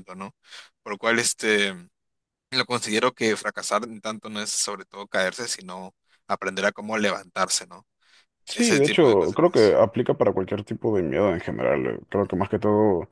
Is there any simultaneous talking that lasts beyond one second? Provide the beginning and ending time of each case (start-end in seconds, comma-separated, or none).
8.5-9.7